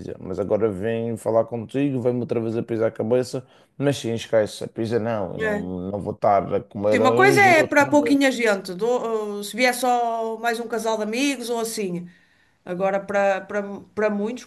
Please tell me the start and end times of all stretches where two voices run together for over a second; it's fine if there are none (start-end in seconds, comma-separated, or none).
6.9-8.2